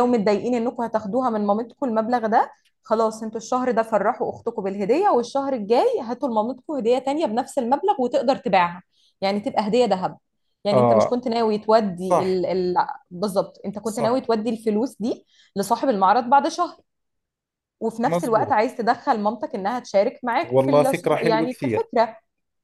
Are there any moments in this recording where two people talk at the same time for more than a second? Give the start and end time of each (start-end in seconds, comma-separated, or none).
20.4-21.9